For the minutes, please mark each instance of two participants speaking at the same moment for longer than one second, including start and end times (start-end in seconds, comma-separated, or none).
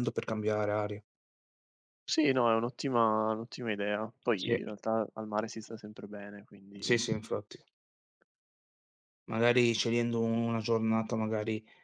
none